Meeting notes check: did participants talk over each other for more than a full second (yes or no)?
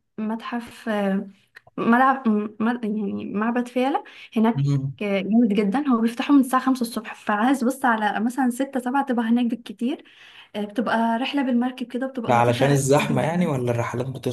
yes